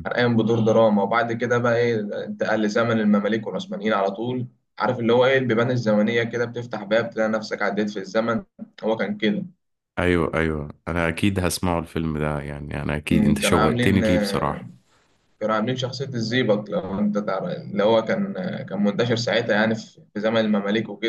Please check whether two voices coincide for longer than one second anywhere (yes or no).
yes